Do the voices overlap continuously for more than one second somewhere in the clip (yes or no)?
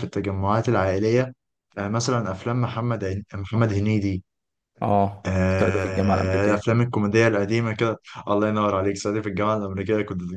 yes